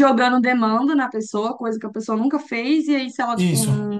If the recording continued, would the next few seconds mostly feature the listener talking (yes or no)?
no